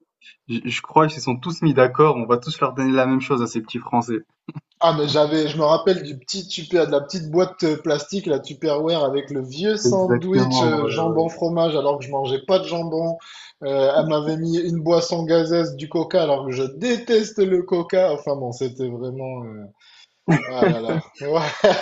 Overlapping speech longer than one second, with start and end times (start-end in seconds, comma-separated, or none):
9.8-11.4